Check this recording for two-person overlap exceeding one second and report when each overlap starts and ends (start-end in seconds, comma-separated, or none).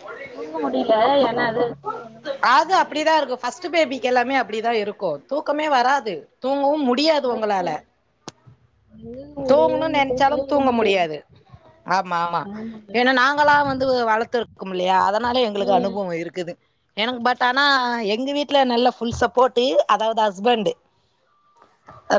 9.5-11.1